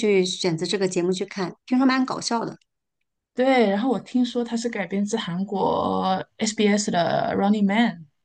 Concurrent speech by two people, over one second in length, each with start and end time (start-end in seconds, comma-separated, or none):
none